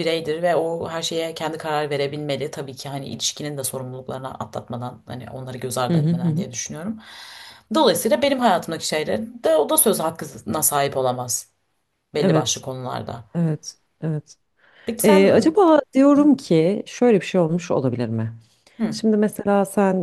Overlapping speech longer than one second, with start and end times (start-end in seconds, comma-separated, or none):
none